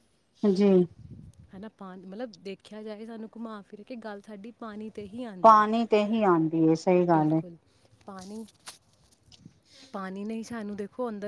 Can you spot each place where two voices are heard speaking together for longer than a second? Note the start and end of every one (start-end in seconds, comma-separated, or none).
none